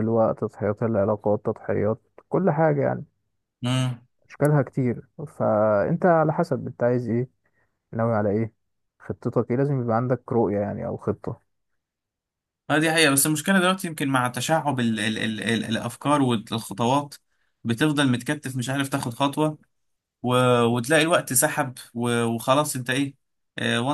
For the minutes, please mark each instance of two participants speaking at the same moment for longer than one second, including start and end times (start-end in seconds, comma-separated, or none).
none